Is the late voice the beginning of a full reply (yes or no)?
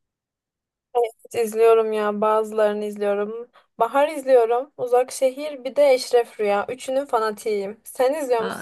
yes